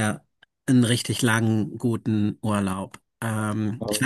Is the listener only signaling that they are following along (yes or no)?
yes